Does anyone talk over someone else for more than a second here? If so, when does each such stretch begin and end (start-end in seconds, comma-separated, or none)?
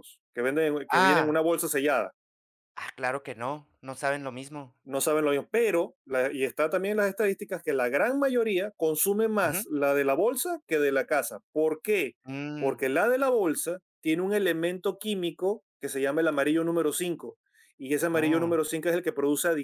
none